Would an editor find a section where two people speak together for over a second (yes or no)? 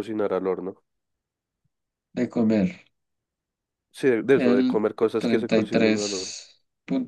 yes